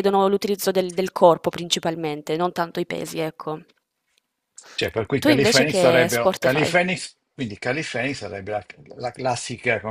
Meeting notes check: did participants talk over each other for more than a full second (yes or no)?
yes